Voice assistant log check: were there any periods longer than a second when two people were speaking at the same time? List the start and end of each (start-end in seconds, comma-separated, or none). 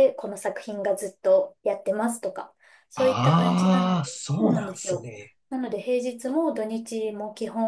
3.0-5.1